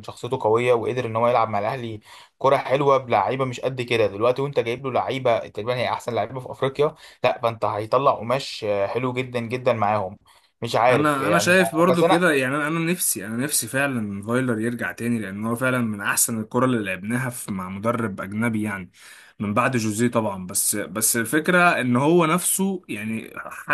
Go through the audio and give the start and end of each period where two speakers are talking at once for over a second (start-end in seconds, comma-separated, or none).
10.8-12.3